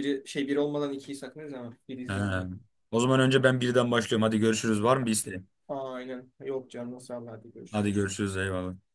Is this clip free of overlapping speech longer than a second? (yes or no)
yes